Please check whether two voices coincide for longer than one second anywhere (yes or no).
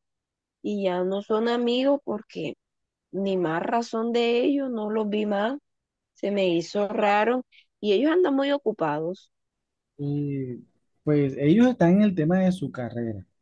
no